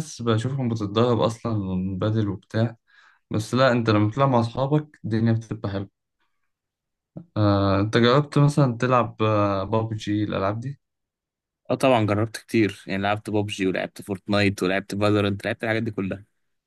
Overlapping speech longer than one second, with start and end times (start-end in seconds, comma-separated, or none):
none